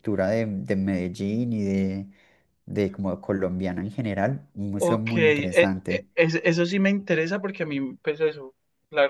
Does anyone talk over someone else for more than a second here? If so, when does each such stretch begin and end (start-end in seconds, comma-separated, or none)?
4.8-6.1